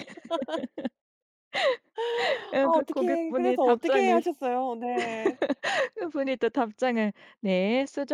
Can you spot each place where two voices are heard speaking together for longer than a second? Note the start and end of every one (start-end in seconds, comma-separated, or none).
2.6-4.2